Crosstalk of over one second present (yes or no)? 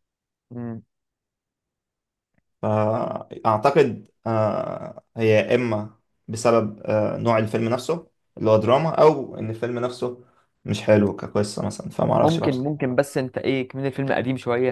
no